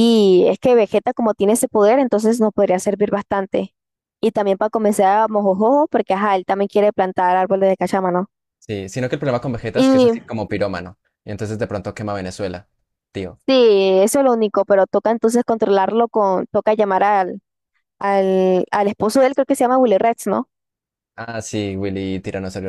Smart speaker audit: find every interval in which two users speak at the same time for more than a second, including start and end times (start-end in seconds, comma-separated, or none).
none